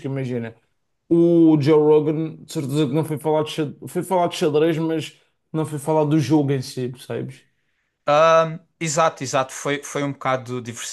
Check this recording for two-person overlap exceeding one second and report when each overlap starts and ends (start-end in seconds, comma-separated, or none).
none